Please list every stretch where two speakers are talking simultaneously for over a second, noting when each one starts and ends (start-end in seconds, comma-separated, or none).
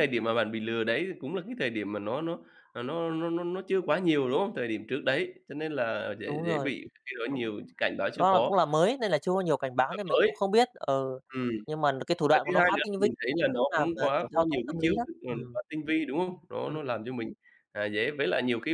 12.3-15.6